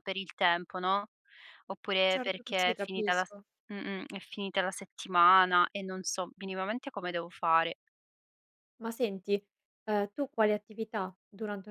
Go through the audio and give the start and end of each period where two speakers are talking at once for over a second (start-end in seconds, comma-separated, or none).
2.1-3.4